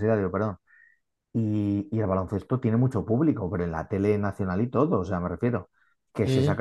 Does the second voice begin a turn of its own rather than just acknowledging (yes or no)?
no